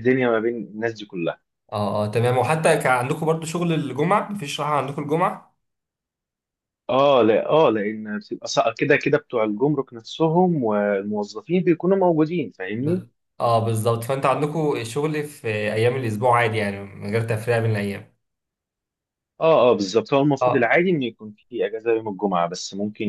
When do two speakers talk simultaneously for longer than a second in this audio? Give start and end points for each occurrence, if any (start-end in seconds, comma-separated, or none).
none